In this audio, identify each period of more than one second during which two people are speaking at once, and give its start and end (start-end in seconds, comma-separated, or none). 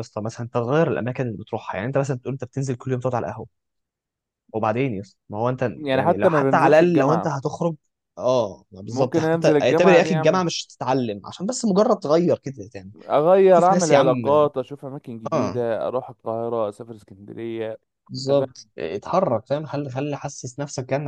5.8-7.3, 8.9-10.4